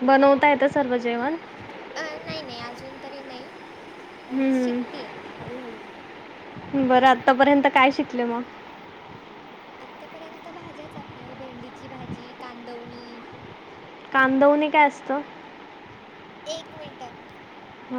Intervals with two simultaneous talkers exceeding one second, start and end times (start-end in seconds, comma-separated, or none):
none